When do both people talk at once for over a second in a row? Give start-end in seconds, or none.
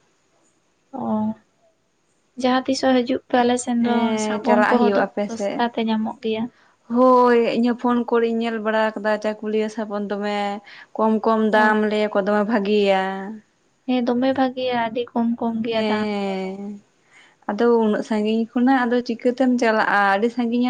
3.8-5.7